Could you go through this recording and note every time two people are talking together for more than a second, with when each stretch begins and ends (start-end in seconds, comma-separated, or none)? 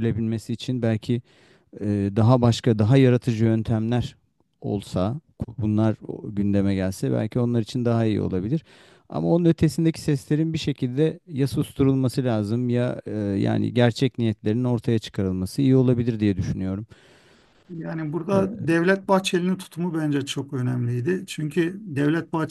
none